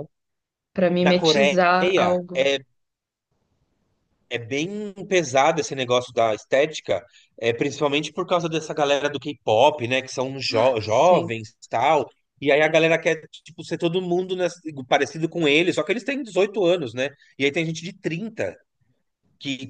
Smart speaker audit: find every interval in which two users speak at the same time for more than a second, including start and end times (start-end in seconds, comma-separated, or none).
1.0-2.5